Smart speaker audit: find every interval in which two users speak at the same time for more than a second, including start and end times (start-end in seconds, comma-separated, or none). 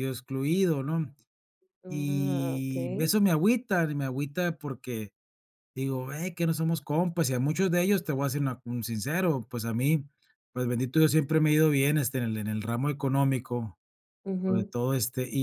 1.9-3.2